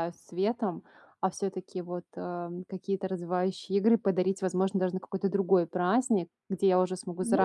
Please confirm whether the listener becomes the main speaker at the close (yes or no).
no